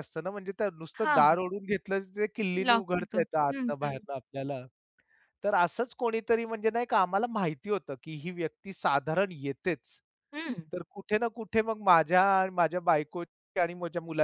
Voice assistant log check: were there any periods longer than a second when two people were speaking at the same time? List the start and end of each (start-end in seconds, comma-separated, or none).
2.7-4.0